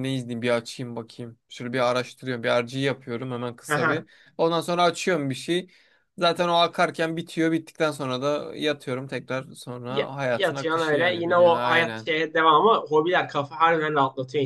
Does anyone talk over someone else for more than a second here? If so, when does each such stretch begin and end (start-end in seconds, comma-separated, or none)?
9.9-12.1